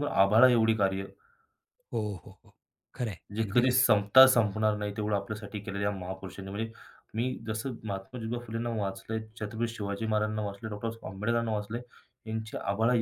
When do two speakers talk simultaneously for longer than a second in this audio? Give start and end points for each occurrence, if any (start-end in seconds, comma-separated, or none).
none